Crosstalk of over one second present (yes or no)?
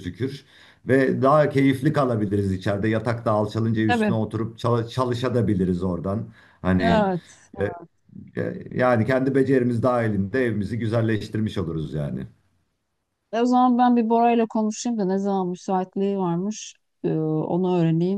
no